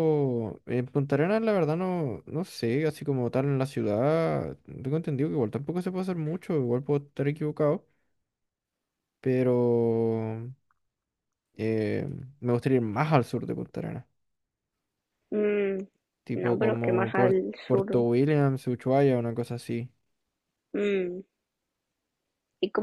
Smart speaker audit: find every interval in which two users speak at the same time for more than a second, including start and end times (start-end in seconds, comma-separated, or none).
16.3-18.0